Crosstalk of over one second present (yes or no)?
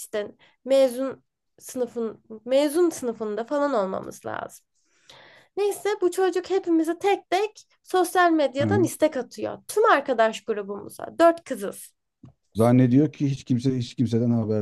no